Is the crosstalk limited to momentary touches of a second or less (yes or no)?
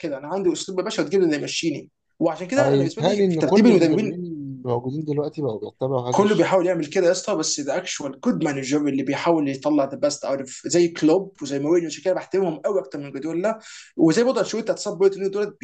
no